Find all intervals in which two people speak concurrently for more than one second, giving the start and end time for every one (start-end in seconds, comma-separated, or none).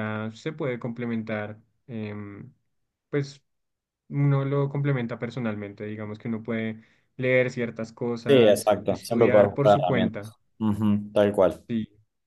8.3-10.4